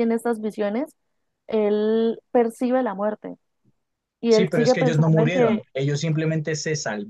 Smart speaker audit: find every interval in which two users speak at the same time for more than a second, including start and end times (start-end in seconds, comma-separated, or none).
4.3-5.6